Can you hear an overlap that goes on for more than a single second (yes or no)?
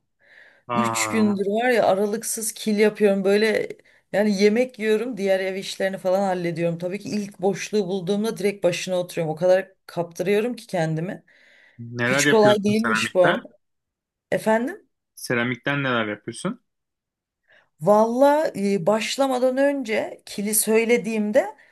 yes